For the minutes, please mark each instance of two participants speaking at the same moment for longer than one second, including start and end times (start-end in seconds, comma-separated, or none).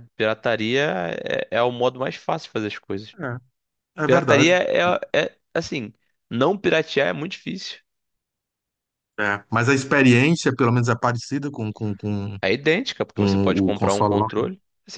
13.2-14.5